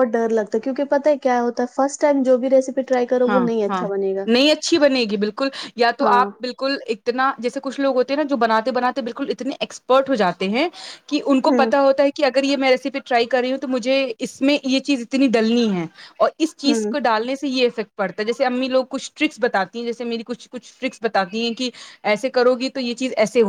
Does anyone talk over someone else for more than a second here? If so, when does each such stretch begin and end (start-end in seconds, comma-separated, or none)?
none